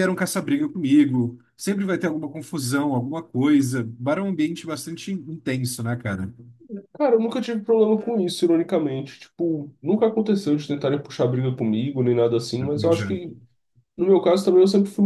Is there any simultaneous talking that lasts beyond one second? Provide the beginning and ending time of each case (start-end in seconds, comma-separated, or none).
none